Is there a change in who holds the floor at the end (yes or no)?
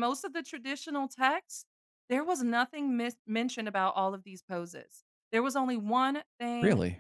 no